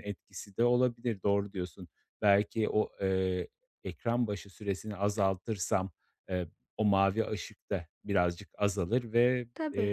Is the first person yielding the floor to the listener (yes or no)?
no